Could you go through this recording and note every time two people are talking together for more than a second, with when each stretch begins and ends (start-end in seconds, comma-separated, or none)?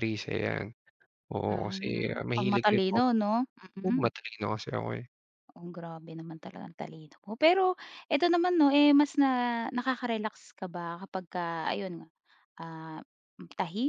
1.5-3.0